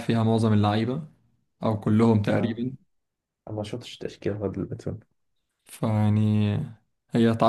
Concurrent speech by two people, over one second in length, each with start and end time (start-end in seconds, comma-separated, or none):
none